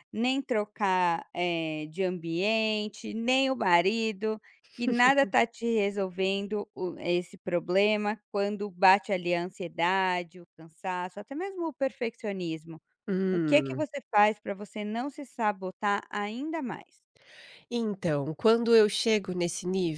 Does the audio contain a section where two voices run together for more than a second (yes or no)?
no